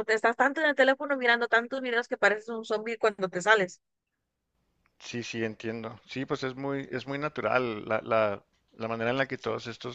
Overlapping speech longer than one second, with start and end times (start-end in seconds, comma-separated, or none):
none